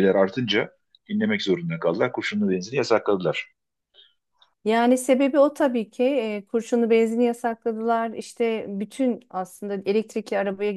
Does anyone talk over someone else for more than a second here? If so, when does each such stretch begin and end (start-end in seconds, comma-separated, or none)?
none